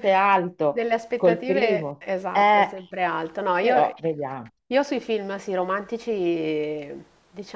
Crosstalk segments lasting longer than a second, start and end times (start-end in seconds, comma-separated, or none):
0.7-2.7